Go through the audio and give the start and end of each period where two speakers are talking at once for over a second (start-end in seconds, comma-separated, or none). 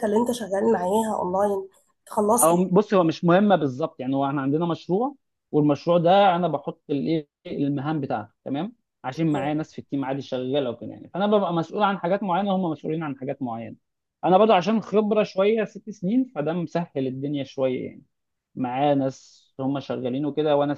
none